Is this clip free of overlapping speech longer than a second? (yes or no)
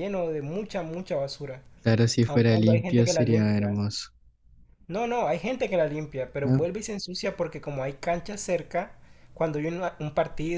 no